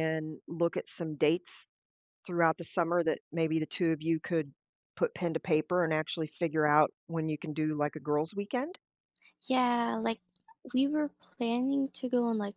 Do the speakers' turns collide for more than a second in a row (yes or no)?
no